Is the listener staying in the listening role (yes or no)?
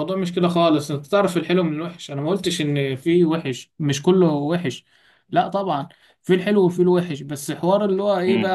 yes